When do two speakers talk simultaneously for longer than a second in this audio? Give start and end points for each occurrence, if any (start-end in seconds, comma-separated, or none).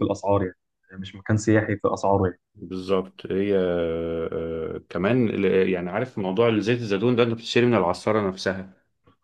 none